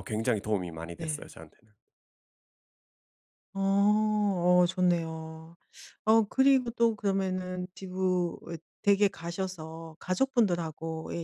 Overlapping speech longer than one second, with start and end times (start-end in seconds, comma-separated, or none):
none